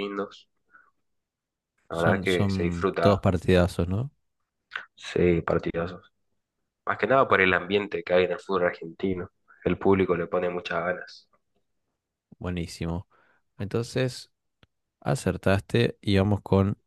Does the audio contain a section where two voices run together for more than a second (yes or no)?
yes